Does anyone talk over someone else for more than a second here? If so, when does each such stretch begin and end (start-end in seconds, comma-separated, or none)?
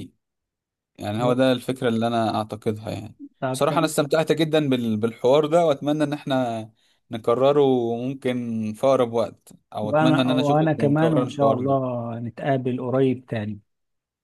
9.8-12.0